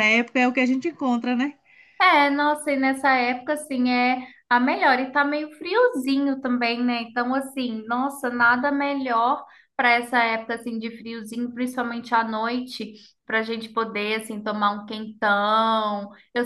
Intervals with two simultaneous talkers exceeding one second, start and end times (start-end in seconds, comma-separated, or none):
none